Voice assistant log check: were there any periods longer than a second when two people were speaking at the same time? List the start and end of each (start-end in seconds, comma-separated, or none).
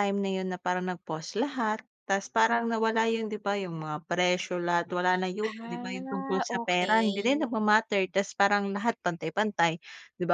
5.4-7.5